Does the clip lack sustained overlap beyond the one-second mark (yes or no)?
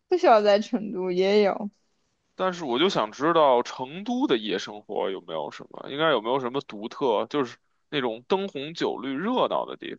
yes